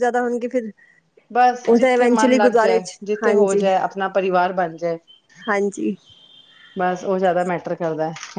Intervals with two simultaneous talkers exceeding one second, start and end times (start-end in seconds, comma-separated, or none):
1.7-3.6